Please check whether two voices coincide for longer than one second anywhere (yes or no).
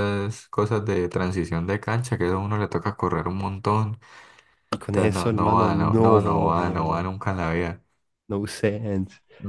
yes